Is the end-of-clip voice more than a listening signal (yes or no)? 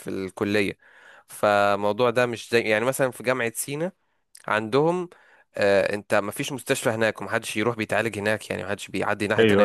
no